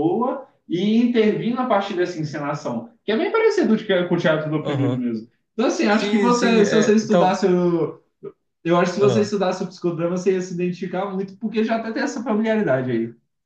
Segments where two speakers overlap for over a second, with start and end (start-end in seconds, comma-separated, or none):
5.8-7.4